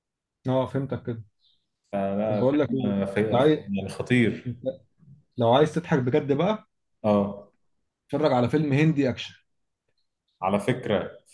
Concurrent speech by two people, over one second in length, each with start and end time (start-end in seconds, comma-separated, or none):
2.3-3.6